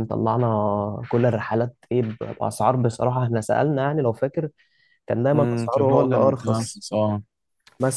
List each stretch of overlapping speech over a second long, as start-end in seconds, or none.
5.3-6.8